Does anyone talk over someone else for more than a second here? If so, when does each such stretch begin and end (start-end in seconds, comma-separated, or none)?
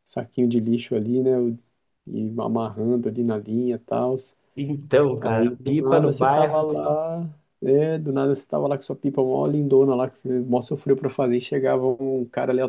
5.2-6.6